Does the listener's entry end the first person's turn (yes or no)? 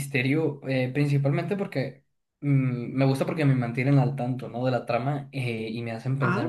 no